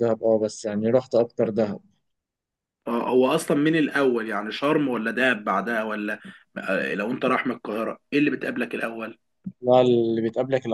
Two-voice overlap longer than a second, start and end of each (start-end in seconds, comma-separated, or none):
none